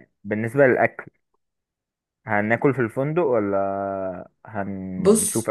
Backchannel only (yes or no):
no